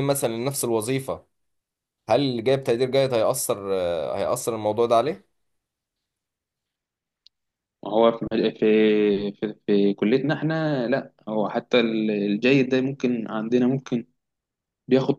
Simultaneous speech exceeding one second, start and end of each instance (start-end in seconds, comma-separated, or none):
none